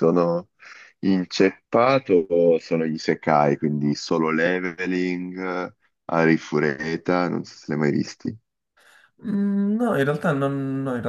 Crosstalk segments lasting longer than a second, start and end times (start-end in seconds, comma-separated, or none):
none